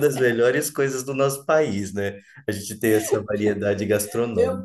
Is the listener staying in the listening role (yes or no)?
no